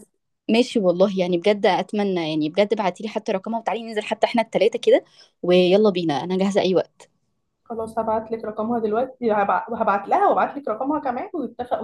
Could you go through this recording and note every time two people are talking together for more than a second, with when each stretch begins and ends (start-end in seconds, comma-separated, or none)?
none